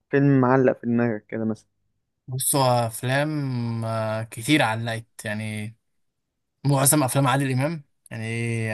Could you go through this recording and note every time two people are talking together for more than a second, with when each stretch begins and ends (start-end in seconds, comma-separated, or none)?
none